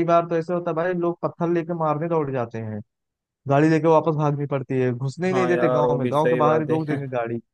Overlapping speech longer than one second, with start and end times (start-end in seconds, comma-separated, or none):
5.3-7.0